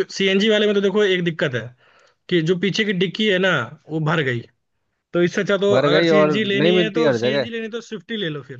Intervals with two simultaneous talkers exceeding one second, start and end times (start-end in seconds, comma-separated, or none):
5.7-7.5